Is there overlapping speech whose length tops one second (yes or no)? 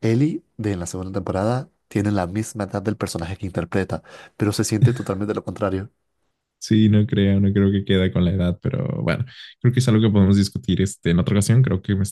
no